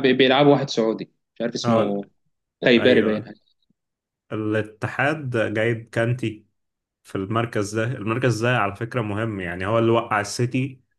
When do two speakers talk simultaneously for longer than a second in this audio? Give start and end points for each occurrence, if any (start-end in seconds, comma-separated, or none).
none